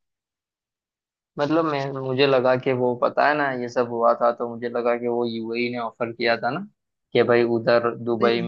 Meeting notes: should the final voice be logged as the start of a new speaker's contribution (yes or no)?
no